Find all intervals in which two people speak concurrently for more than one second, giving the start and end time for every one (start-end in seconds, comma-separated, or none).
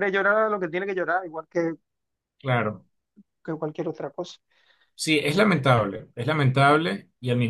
none